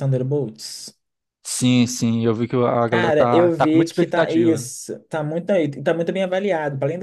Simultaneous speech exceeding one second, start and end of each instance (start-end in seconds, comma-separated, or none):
2.9-4.7